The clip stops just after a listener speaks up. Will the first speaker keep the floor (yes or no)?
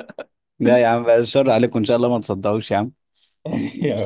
yes